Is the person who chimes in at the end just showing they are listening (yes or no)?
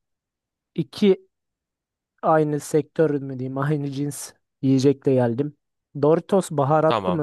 yes